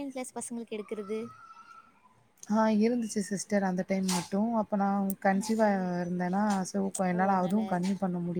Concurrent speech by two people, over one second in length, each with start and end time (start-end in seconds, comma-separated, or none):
none